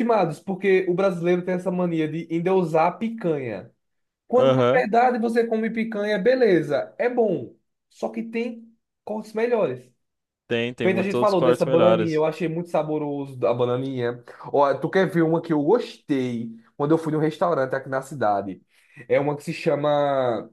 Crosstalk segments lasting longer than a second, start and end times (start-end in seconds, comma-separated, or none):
10.8-12.2